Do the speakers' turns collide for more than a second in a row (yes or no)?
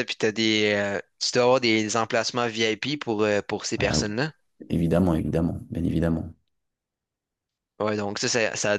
no